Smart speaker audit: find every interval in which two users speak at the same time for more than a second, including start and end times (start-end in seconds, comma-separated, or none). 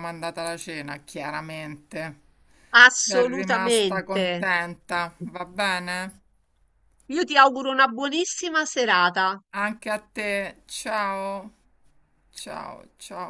3.0-4.2